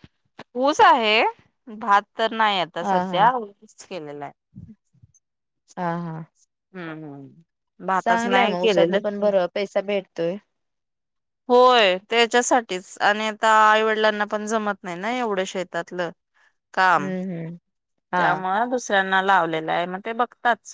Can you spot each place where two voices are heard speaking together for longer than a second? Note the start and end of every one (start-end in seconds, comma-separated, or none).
8.0-9.3